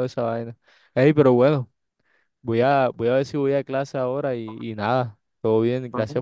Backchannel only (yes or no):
yes